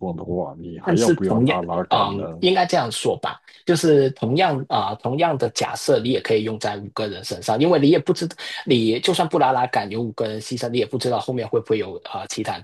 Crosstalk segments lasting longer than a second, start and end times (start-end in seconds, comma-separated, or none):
0.8-2.2